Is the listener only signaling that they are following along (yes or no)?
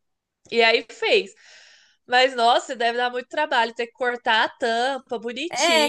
no